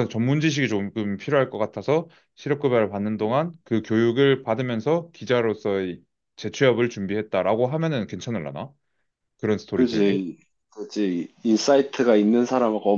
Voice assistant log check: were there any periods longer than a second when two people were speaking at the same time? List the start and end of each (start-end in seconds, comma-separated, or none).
none